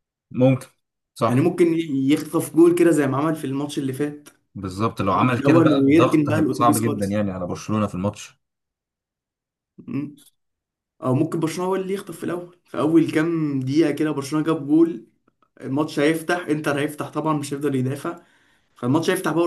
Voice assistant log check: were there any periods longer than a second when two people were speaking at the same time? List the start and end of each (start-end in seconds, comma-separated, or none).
5.1-7.2